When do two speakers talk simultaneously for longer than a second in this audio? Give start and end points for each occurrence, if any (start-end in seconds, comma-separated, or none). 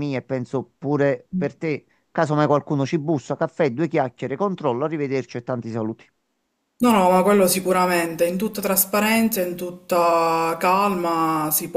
none